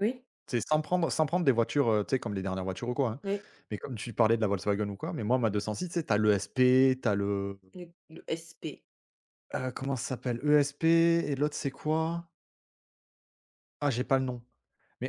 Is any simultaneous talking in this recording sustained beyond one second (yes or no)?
no